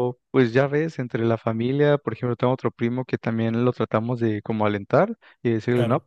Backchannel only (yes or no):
yes